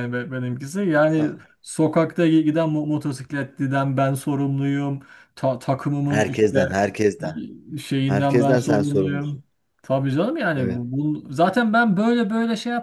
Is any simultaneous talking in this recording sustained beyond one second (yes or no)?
yes